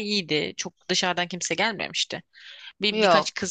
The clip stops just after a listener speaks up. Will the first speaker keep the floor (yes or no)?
yes